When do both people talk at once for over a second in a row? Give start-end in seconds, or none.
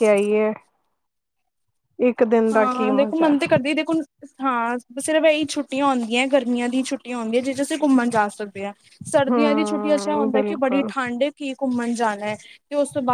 9.3-10.9